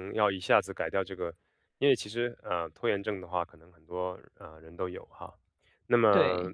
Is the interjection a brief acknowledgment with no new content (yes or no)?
yes